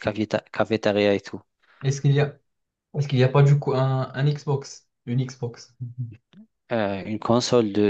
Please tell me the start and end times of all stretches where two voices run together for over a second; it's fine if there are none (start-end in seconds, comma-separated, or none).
none